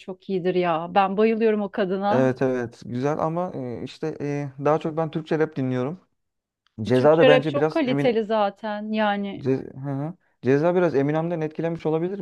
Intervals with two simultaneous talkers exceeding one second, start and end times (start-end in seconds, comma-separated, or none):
6.9-8.2